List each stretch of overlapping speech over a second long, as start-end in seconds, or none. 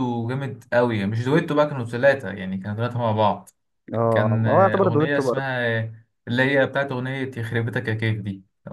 4.1-5.5